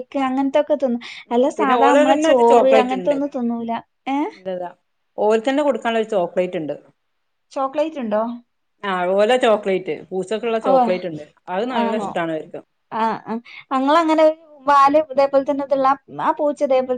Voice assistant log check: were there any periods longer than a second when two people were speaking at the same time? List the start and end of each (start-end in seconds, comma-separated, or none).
1.3-3.2